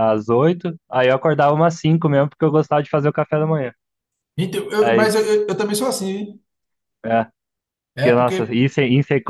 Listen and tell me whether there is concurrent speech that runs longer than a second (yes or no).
no